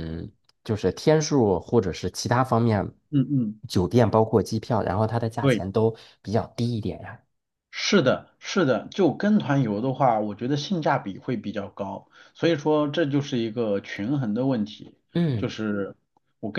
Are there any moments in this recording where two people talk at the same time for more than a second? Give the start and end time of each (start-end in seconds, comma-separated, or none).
none